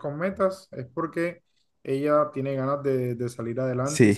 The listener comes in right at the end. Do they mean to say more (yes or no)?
yes